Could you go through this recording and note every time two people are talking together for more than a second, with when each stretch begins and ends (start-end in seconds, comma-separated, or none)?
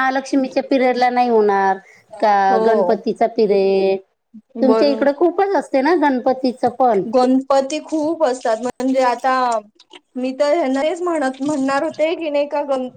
none